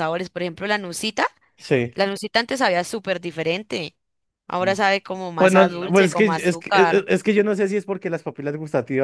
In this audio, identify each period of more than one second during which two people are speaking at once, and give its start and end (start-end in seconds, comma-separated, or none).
5.3-7.1